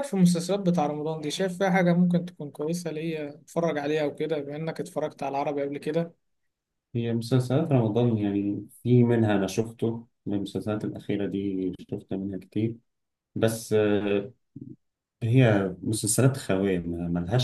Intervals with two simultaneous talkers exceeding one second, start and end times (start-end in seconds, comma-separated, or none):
none